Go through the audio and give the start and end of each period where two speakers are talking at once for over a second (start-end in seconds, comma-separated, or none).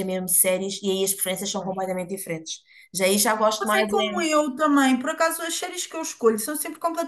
none